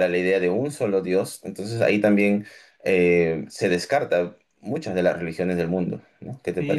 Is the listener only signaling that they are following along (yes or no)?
no